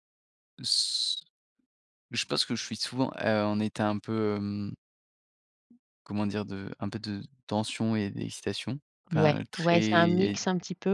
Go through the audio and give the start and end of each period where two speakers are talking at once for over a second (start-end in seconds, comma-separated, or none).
9.1-10.4